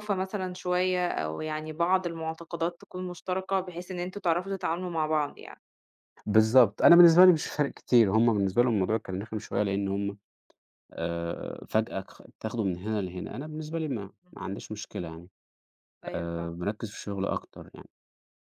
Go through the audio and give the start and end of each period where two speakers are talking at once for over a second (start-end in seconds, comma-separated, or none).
none